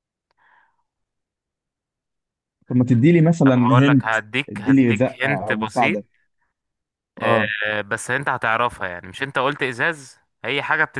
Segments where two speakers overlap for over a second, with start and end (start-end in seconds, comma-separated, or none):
3.5-6.0